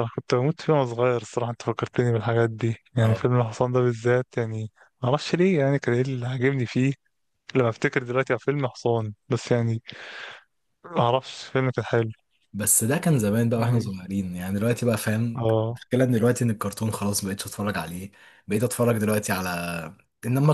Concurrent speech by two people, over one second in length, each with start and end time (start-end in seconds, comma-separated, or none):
none